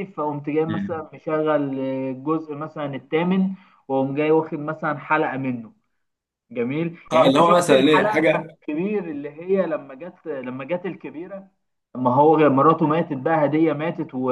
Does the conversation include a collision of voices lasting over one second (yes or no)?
yes